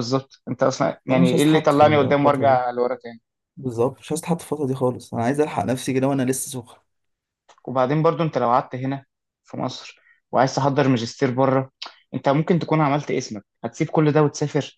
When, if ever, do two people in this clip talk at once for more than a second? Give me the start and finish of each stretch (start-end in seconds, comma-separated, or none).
1.1-2.6